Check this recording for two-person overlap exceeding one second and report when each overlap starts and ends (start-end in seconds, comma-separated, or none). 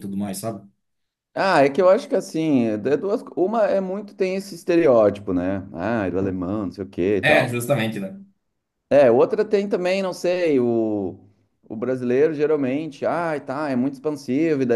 none